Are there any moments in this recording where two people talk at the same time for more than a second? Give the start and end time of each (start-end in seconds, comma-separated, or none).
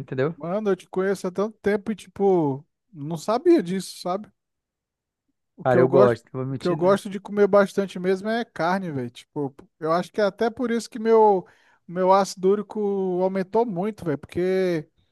5.6-7.0